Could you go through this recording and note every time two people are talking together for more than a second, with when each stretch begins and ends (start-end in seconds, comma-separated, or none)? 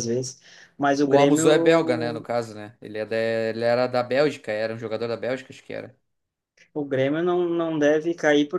1.0-2.3